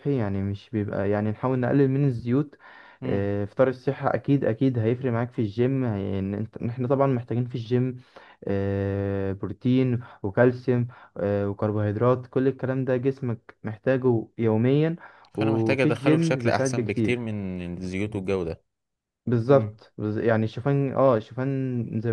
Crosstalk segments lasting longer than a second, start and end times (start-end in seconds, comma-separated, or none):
15.4-17.2